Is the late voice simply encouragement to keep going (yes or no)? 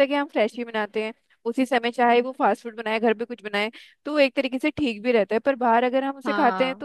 yes